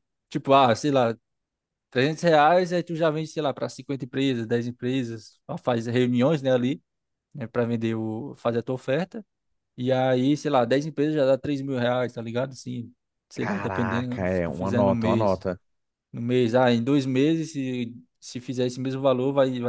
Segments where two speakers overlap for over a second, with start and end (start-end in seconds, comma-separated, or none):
13.3-15.4